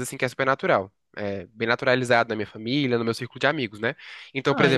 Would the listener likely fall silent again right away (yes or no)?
yes